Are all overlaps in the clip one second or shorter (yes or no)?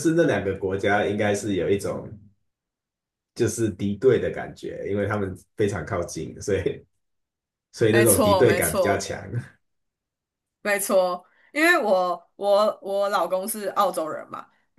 no